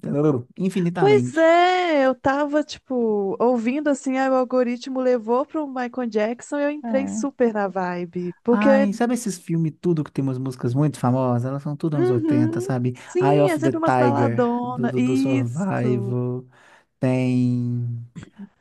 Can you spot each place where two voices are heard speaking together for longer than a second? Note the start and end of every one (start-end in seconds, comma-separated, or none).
11.9-16.2